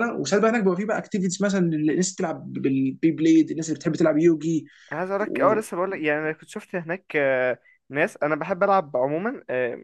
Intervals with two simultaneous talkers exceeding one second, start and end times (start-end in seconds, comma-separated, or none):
none